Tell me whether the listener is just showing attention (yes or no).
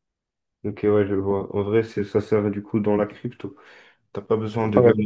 yes